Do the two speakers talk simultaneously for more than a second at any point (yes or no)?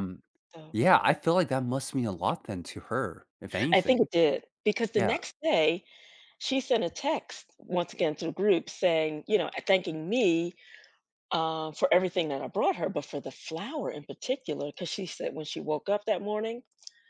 no